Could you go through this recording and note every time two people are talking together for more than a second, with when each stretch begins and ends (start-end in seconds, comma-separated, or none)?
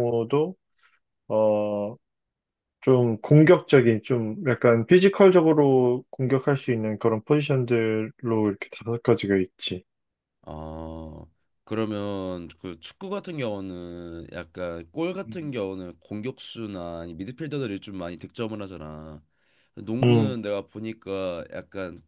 none